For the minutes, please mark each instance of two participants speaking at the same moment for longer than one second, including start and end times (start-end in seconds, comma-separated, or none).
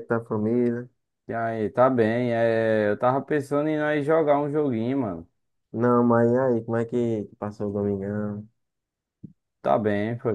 none